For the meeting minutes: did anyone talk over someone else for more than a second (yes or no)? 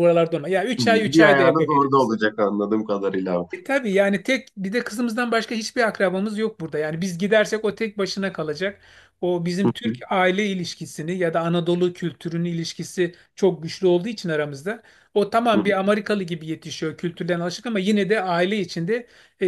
yes